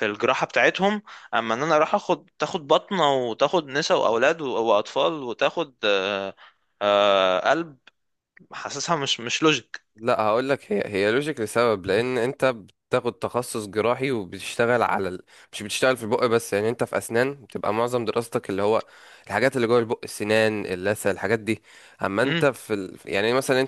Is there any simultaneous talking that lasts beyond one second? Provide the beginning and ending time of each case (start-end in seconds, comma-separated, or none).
none